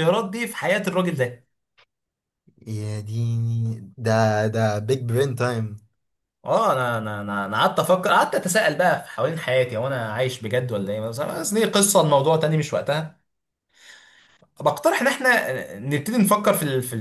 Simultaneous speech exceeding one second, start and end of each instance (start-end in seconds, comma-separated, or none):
none